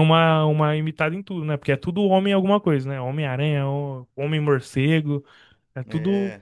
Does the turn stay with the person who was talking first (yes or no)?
yes